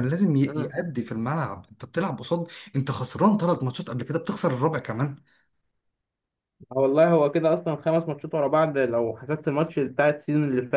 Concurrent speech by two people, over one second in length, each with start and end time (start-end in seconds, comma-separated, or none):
none